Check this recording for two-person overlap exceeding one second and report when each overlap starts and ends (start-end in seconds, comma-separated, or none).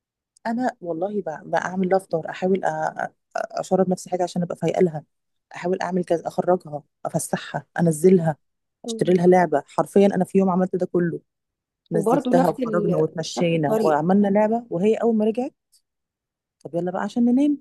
11.9-14.1